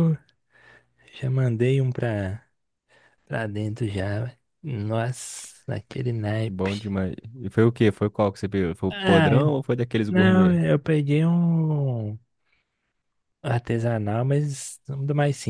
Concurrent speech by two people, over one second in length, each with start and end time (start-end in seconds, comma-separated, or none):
none